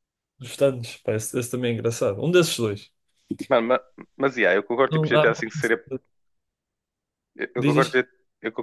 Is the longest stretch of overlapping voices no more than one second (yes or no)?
yes